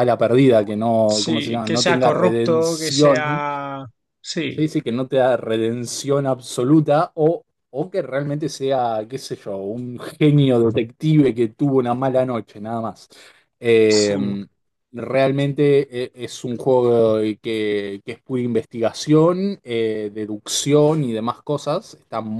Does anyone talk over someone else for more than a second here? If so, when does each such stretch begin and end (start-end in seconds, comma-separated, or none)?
1.2-3.4